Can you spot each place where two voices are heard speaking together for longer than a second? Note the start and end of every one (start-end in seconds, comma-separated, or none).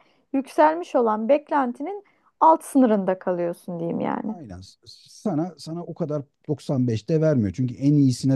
none